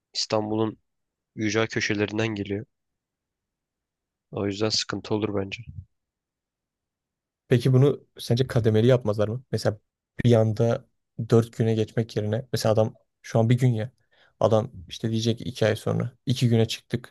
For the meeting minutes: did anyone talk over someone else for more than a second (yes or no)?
no